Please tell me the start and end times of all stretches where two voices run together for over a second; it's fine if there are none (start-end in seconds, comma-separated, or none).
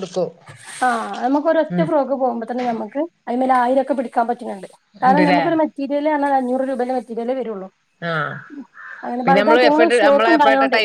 none